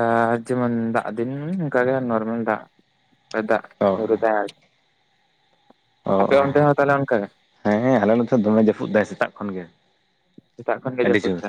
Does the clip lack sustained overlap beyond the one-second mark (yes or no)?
yes